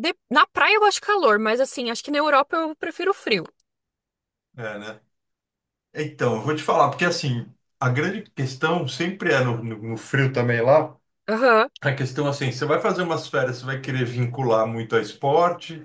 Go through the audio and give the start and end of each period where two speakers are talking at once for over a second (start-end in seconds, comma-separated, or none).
none